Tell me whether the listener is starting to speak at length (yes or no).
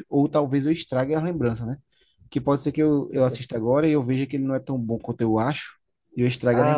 yes